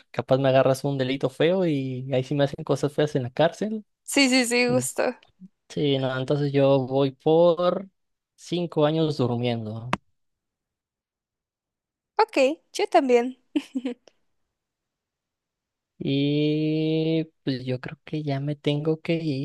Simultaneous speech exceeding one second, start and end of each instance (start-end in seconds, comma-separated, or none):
none